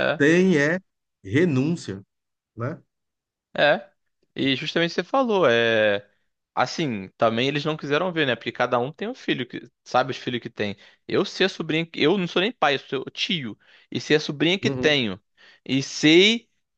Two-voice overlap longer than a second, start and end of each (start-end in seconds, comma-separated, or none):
none